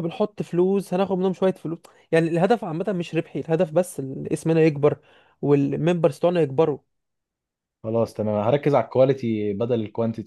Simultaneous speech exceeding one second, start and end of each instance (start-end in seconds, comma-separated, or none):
none